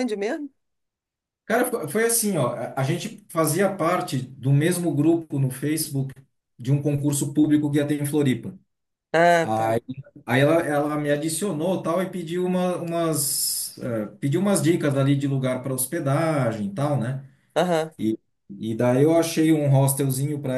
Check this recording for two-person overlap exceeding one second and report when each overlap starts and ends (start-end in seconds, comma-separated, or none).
none